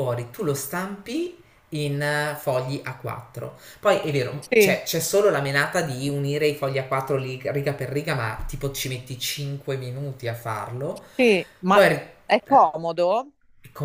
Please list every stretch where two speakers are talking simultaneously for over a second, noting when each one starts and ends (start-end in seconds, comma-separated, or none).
none